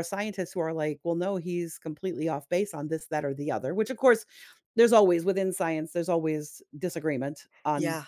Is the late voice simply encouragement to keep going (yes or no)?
no